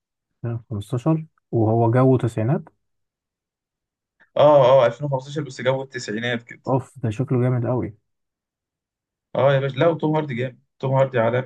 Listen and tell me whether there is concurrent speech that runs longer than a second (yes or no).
no